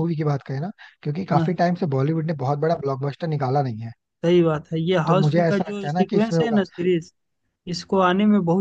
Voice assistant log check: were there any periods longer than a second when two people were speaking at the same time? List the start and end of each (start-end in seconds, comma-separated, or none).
5.1-6.6